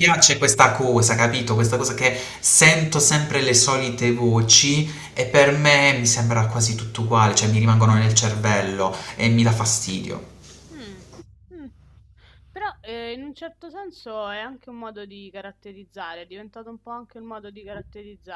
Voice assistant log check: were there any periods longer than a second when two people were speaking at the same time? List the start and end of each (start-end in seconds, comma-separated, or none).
none